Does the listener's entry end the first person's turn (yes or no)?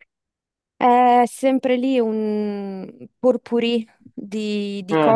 no